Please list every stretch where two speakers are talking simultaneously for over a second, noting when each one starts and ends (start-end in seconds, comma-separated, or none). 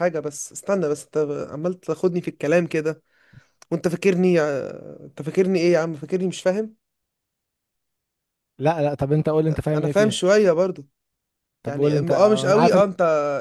11.7-12.9